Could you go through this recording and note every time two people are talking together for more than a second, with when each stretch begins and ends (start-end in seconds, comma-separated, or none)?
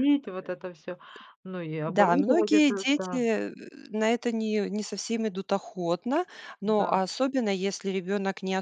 1.9-3.3